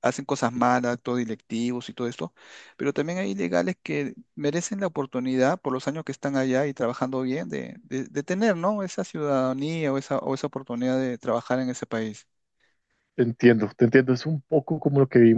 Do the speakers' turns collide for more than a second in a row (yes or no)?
no